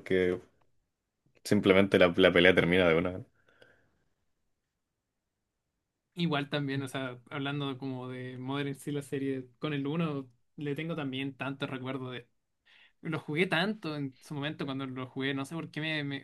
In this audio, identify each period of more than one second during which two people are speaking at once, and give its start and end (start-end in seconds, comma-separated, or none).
none